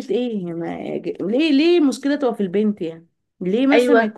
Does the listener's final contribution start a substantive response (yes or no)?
no